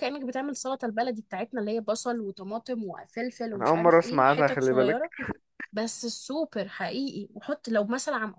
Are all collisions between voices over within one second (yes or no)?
no